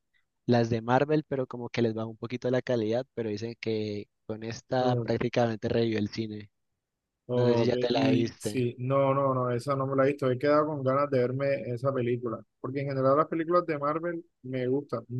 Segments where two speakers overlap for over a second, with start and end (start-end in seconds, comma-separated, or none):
7.3-8.7